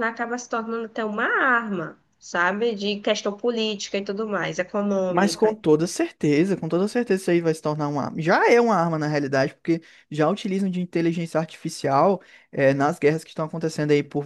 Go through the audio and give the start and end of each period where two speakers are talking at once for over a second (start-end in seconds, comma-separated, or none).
none